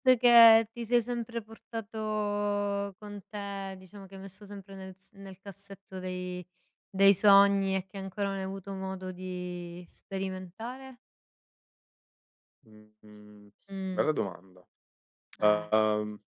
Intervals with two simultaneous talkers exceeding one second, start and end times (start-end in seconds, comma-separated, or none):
none